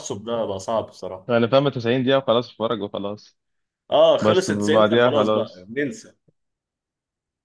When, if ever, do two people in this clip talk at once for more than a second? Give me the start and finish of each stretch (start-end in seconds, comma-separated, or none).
4.2-5.7